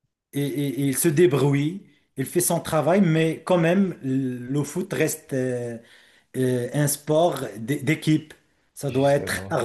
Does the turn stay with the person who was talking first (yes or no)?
yes